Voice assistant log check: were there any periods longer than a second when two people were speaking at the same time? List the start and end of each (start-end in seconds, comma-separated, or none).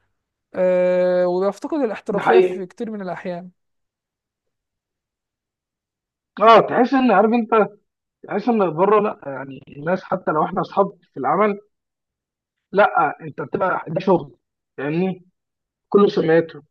none